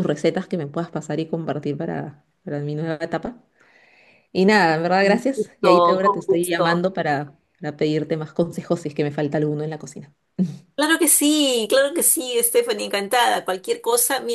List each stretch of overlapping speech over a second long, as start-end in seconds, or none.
5.0-6.9